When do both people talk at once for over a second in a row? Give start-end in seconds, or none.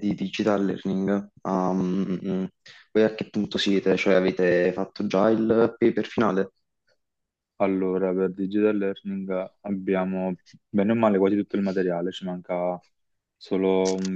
none